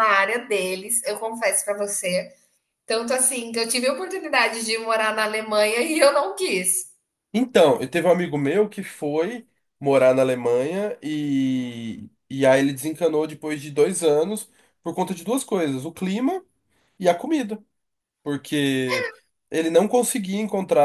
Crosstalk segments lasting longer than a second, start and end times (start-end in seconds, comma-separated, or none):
none